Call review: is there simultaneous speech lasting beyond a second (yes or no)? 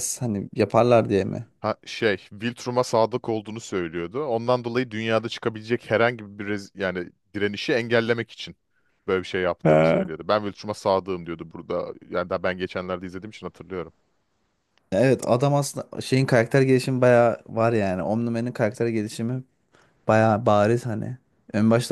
no